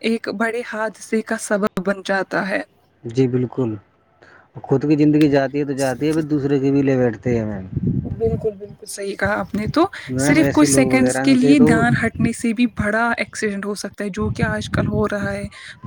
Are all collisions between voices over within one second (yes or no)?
no